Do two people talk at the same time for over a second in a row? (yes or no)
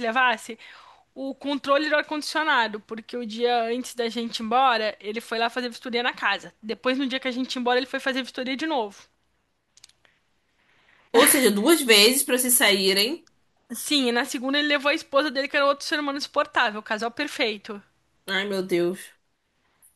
no